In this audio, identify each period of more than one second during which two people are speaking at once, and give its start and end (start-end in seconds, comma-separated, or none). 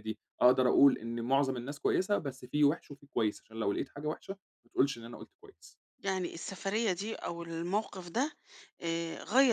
none